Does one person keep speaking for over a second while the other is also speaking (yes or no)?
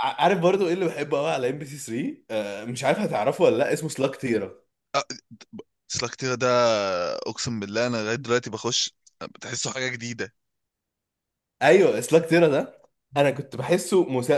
no